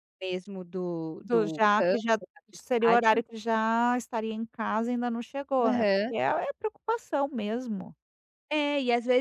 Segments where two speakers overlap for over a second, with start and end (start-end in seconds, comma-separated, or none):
1.2-3.2